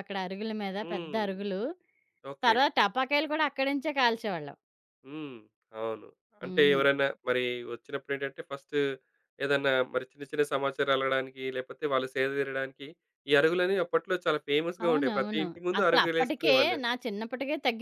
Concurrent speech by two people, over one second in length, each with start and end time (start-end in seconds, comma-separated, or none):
14.8-16.8